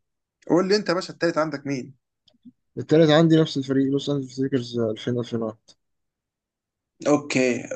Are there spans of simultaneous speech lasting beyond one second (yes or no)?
no